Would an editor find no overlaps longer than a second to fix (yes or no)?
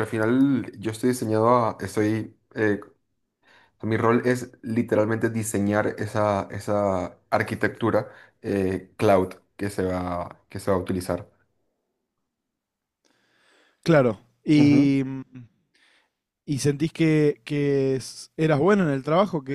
yes